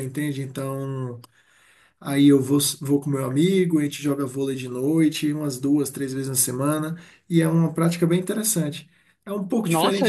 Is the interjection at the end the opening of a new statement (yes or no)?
yes